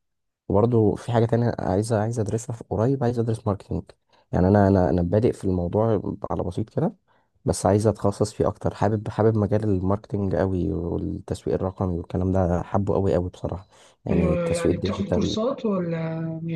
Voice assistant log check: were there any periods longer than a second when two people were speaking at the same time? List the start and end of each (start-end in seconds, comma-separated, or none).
14.1-15.4